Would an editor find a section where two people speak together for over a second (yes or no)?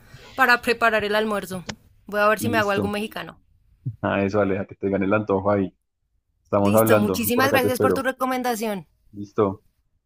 yes